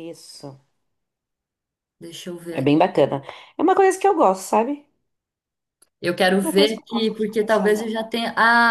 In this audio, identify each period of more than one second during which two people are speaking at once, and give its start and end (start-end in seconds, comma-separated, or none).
6.4-7.9